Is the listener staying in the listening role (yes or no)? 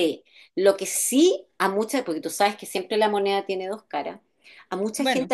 yes